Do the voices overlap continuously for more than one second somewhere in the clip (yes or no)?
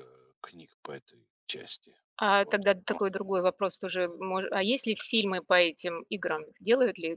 no